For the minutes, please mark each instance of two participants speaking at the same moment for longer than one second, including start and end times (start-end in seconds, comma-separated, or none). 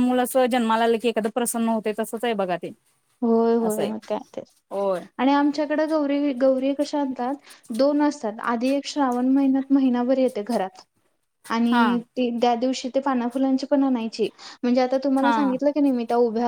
none